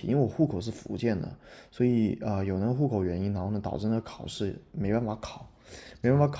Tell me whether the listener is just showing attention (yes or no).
yes